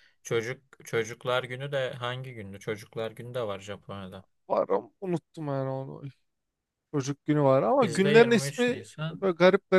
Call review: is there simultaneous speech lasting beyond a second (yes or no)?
yes